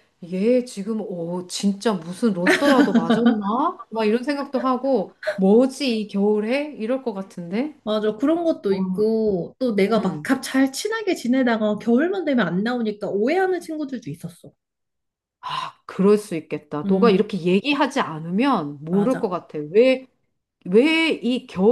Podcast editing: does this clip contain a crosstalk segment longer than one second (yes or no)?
no